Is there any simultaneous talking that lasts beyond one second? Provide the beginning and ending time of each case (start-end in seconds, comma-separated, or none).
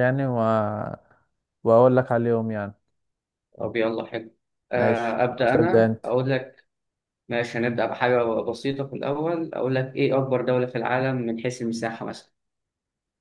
4.8-6.1